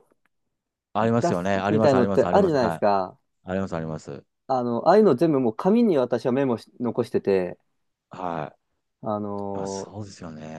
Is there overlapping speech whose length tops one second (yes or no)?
yes